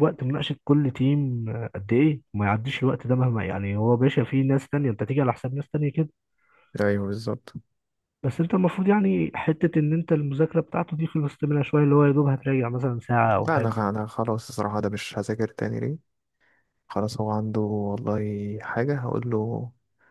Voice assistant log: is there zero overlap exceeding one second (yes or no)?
yes